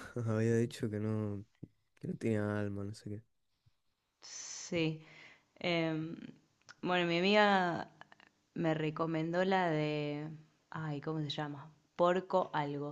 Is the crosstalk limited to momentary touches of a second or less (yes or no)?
yes